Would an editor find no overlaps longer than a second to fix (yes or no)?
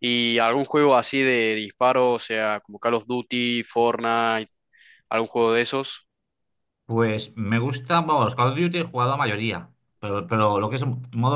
yes